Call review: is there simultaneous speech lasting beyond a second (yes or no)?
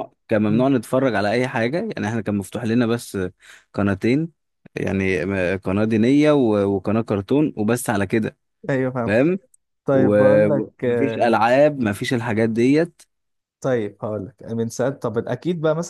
yes